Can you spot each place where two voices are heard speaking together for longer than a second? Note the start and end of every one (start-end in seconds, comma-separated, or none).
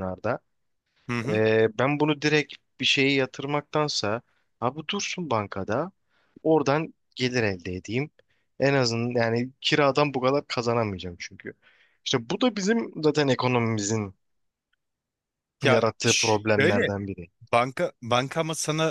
15.7-16.9